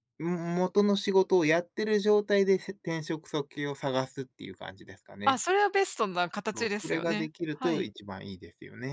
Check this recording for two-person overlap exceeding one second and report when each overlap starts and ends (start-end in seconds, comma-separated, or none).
6.5-7.9